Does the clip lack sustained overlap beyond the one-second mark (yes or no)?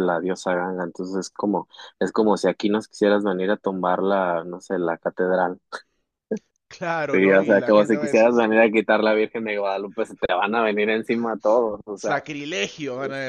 no